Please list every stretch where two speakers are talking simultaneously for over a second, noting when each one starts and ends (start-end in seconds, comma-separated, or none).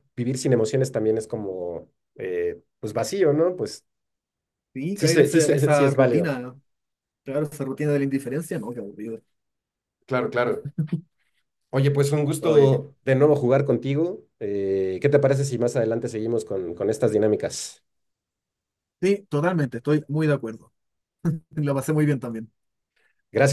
4.9-6.3